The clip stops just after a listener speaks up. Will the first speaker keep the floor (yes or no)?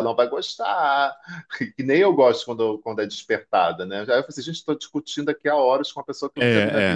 no